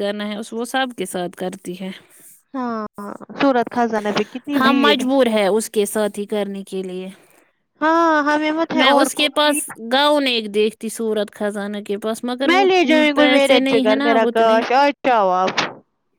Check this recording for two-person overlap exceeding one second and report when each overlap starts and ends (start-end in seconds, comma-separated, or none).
12.9-14.6